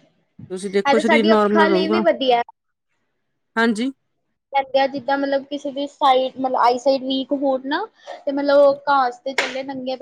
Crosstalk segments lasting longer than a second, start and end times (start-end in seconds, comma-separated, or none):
0.7-2.0